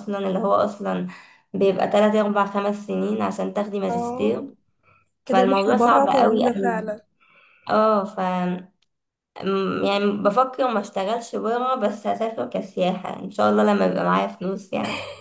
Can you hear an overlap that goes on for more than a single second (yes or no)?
yes